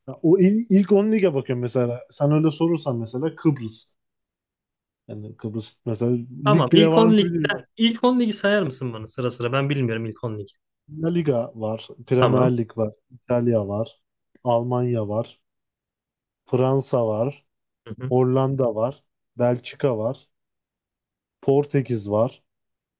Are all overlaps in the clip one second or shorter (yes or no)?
no